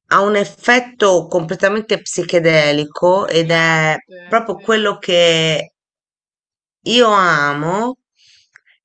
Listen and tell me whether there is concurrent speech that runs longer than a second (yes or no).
yes